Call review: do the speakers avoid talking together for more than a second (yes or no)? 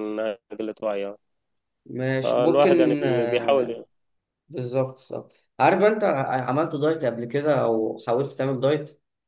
no